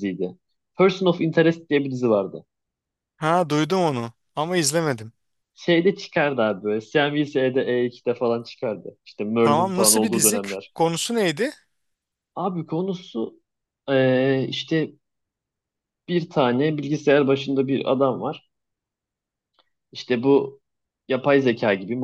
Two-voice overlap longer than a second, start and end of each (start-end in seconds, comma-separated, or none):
9.4-10.7